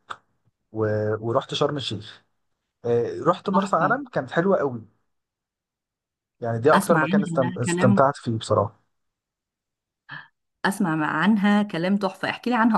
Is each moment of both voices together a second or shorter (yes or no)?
no